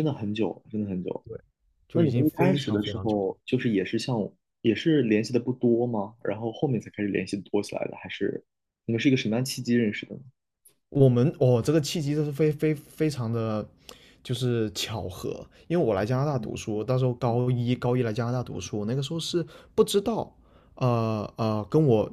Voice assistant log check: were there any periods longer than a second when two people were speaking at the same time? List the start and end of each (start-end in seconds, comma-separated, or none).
1.9-3.2